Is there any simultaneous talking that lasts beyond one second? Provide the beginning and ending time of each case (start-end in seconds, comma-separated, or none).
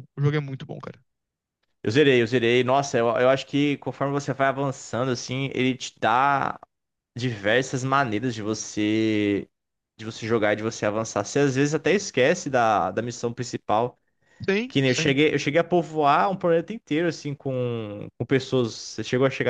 none